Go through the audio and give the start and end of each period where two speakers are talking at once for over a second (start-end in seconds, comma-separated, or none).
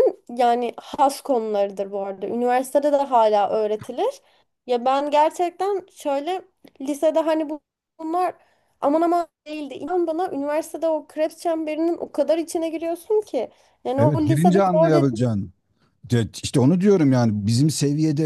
14.0-15.3